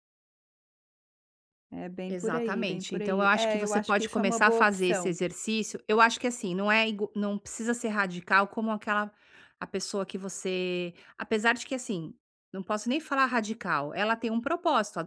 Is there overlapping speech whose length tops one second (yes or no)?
yes